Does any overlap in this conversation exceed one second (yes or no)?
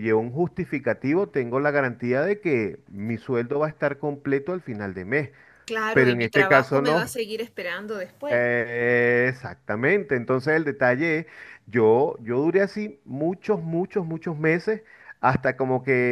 yes